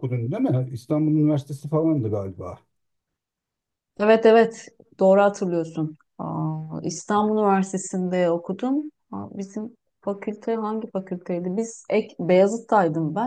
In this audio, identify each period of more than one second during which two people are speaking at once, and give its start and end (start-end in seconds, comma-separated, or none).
none